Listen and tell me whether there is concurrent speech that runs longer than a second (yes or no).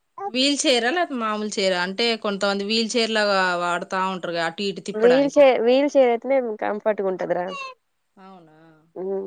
no